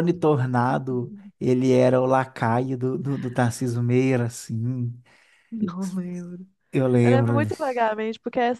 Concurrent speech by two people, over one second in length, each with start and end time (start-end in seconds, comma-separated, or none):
none